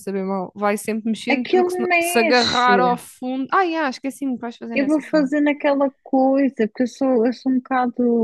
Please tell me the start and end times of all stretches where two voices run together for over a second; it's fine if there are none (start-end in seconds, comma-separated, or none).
1.3-2.8